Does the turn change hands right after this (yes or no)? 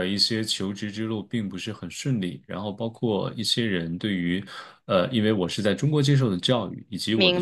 no